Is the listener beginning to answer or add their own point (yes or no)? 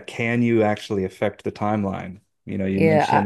yes